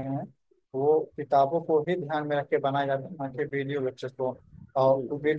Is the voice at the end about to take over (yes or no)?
no